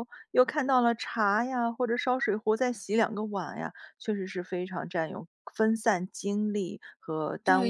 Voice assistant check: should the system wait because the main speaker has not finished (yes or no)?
no